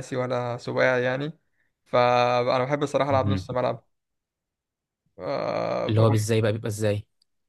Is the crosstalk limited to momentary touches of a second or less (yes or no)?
yes